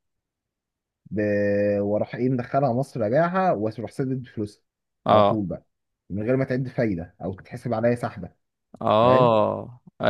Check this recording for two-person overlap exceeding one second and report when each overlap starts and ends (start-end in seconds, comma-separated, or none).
none